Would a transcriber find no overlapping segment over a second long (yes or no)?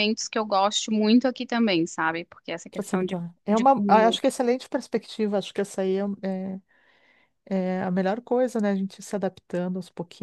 no